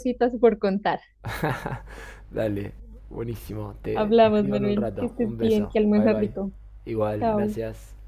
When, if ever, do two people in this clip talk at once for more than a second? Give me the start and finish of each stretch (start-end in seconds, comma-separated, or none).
3.9-6.3